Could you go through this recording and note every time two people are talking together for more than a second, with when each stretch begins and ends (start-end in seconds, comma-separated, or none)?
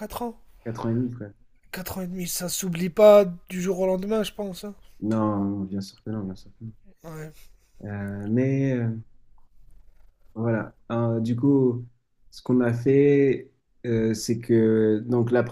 none